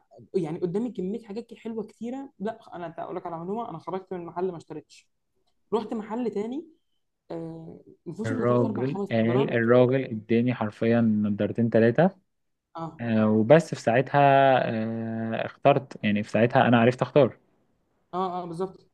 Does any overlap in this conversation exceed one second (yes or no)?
yes